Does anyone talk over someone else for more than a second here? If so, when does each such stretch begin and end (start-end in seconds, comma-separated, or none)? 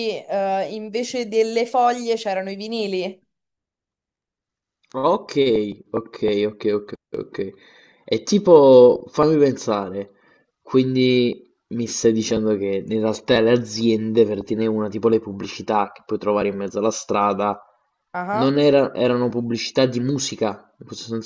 none